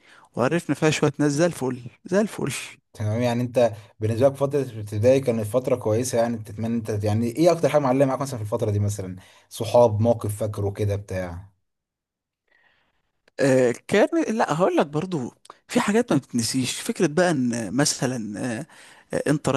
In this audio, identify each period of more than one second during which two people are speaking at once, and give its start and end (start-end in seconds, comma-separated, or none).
none